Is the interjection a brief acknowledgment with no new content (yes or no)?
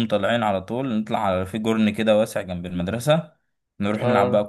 yes